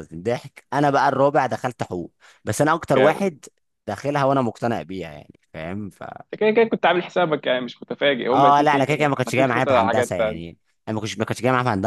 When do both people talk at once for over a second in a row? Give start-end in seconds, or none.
8.3-10.6